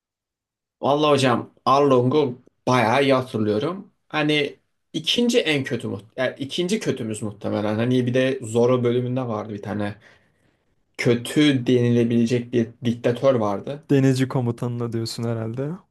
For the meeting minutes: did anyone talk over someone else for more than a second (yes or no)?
no